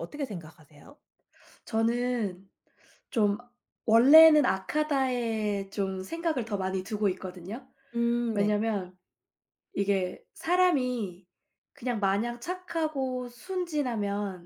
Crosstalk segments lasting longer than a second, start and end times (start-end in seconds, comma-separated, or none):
none